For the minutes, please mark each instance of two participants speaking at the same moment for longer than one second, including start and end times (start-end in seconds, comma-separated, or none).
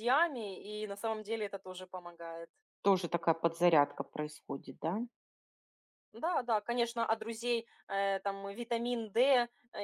none